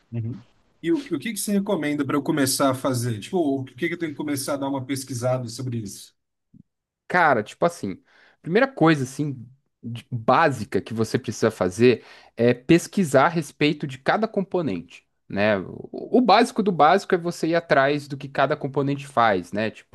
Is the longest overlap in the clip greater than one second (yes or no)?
no